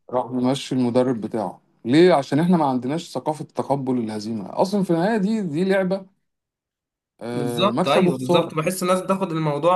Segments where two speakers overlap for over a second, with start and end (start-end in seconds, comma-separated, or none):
7.3-8.5